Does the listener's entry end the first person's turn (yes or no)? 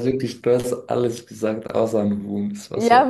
yes